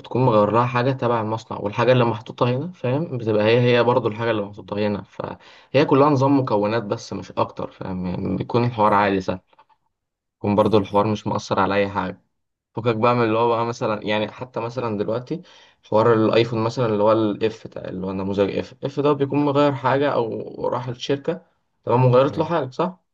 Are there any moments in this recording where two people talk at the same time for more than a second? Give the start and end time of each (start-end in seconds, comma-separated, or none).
none